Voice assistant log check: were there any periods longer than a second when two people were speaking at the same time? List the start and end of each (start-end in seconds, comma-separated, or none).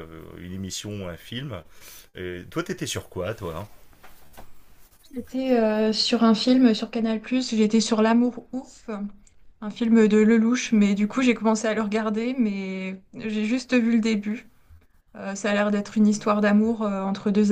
none